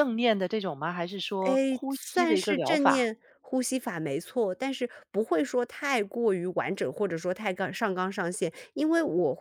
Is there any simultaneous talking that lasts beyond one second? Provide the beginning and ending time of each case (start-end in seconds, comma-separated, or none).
1.4-3.1